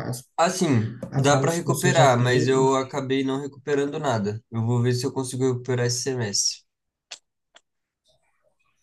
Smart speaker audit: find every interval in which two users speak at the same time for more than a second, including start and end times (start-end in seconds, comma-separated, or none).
1.1-2.5